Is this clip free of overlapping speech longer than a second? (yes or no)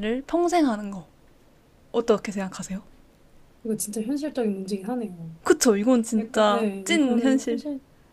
no